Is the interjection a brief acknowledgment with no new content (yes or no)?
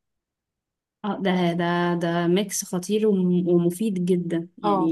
no